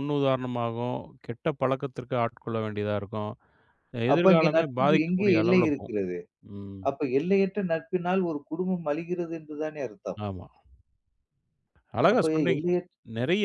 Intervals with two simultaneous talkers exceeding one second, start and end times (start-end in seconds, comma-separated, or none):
4.1-6.0